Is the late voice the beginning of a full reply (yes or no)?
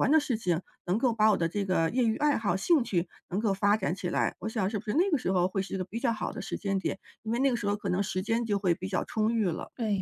yes